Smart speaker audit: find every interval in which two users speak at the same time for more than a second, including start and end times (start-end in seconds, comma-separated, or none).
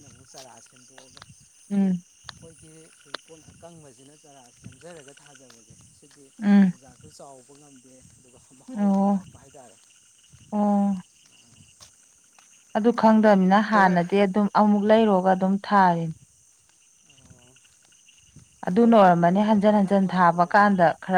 18.8-20.7